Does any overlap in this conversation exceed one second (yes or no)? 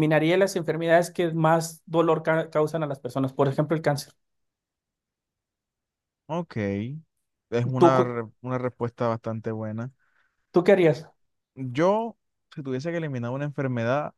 no